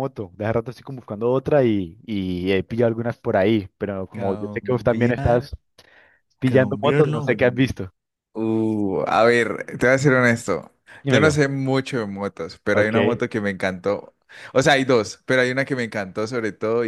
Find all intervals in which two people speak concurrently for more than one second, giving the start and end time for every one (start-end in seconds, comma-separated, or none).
4.1-5.5, 6.4-7.7